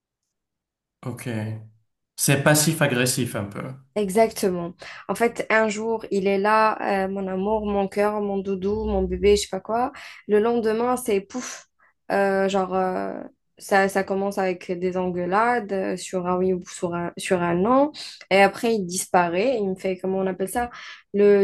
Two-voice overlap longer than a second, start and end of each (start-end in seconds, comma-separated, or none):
none